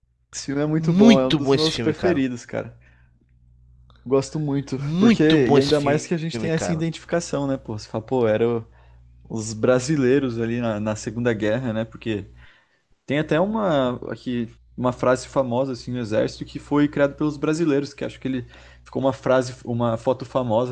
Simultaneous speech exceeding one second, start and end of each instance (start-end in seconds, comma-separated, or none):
0.8-2.2, 4.8-6.8